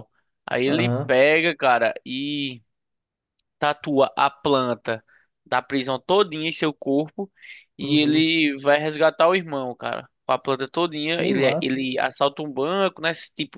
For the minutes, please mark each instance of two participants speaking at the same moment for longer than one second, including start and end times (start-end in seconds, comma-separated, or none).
none